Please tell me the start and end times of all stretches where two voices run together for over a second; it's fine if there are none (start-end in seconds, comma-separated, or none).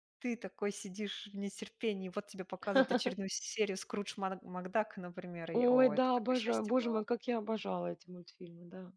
5.5-7.0